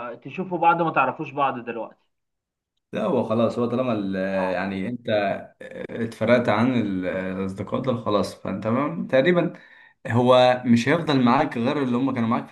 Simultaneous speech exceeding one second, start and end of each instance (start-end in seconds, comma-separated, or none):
none